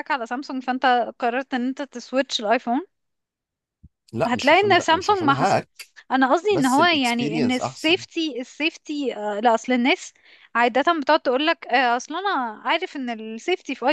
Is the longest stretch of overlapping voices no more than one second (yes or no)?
no